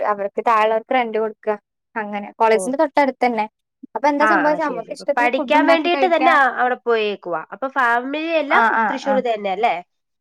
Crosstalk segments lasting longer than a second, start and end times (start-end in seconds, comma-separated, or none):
4.3-6.3